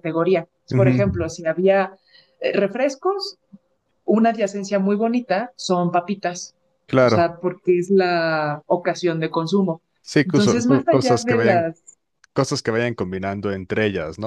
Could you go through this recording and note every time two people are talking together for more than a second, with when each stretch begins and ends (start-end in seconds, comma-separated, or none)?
10.2-11.7